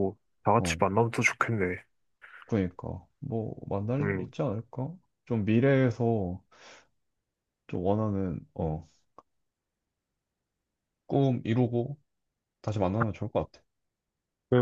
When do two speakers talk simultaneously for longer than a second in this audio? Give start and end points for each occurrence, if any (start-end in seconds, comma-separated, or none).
none